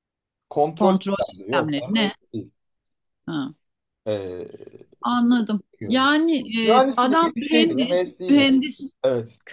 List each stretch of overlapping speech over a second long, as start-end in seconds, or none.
0.7-2.1, 6.8-8.5